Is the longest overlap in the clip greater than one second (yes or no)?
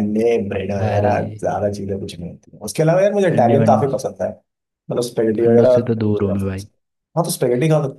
yes